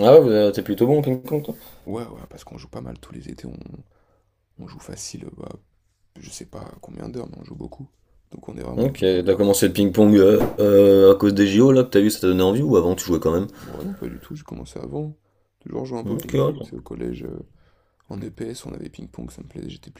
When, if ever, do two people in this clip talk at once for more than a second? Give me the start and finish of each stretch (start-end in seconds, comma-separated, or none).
none